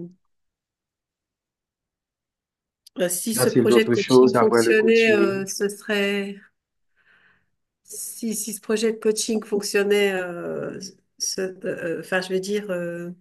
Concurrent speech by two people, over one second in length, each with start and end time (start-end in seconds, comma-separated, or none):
3.3-5.4